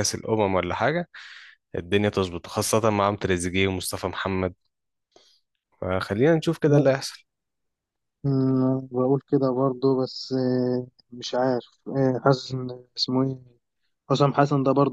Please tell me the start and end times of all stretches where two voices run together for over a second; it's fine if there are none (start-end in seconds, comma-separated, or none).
none